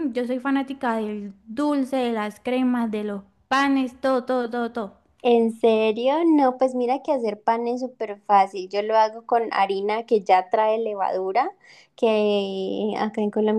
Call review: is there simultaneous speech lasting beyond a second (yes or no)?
no